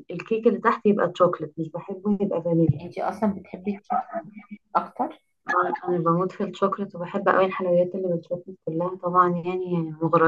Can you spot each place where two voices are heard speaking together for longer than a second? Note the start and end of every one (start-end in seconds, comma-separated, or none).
none